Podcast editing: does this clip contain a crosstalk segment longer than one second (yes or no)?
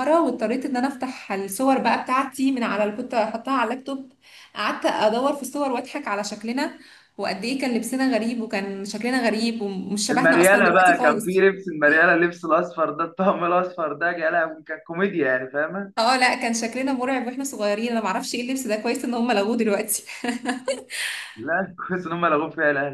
yes